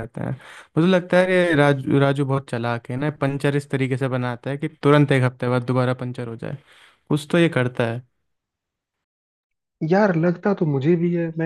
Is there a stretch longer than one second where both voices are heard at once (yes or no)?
no